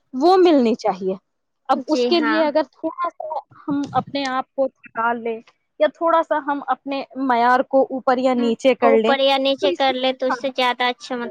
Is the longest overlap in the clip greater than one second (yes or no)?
no